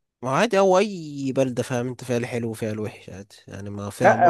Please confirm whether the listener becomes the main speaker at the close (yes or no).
yes